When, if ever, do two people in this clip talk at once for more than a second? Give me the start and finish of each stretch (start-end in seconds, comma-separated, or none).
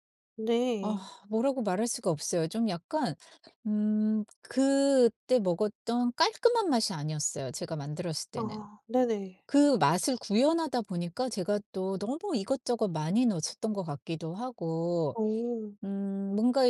none